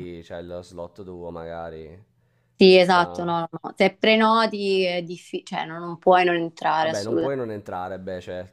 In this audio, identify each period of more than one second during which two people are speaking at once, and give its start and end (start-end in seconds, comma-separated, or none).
none